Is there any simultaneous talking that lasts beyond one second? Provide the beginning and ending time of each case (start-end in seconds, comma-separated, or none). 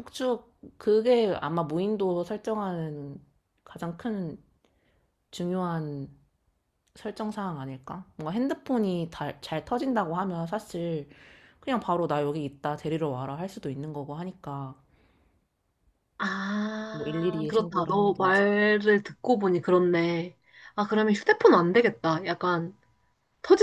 16.9-18.4